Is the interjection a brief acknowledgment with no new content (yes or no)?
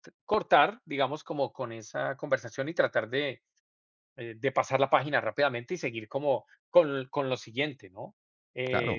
no